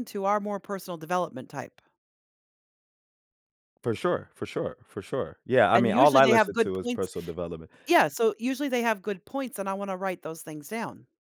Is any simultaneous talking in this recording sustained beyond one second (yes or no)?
yes